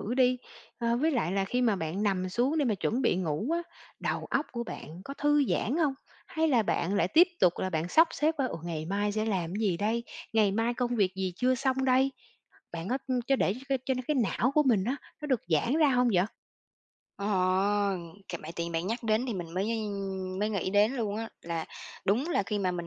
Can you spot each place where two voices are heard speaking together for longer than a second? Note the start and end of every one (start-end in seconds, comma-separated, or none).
none